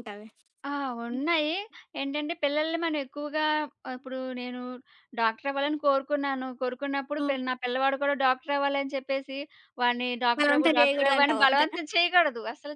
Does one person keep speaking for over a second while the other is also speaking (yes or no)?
yes